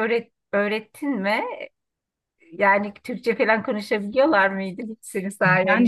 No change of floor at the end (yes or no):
no